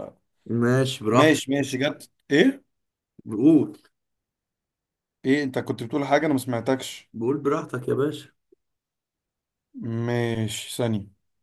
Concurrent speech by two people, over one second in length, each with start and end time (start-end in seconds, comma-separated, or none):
none